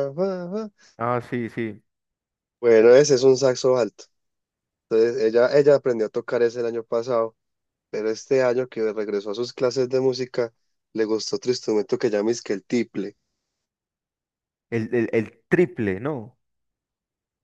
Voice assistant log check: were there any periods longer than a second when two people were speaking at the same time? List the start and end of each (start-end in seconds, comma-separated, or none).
none